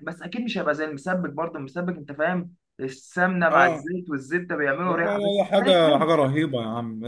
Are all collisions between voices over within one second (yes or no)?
no